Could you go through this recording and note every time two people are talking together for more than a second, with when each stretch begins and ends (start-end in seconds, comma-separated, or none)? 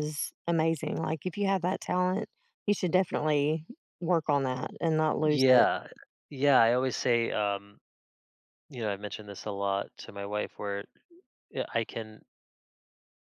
none